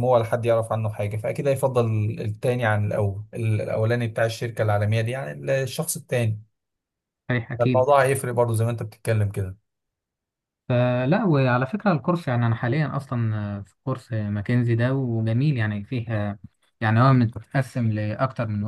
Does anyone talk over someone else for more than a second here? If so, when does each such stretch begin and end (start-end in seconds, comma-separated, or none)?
none